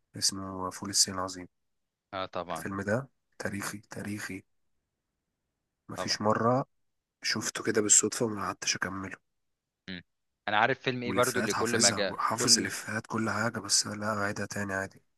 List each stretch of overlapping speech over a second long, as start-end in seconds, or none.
11.0-12.7